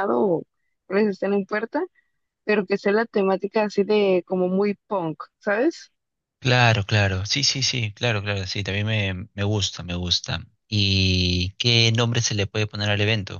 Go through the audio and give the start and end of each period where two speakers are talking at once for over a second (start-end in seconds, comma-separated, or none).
none